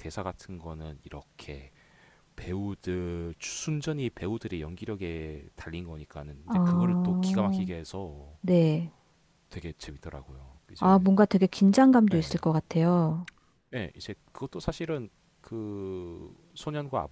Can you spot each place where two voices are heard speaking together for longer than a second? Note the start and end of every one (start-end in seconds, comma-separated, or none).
6.5-7.7